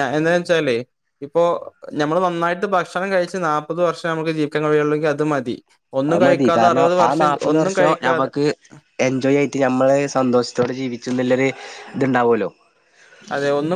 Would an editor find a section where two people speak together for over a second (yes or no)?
yes